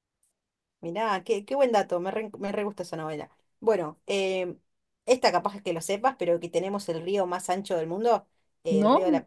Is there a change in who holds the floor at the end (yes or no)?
no